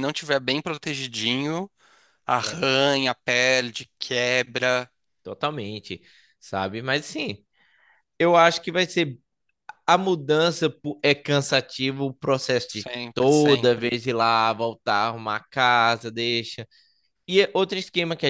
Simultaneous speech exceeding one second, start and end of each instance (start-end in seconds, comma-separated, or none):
12.7-14.0